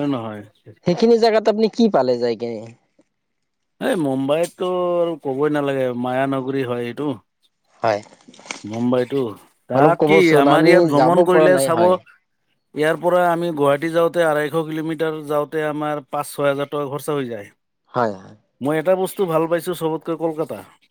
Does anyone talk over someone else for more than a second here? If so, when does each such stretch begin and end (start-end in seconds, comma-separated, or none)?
9.8-11.9